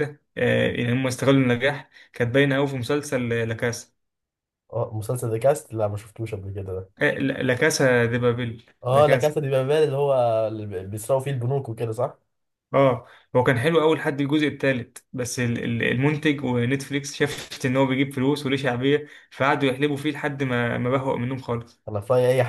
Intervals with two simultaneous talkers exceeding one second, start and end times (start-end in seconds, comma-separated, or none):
none